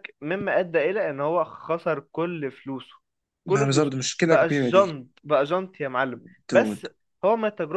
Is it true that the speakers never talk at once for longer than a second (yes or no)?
no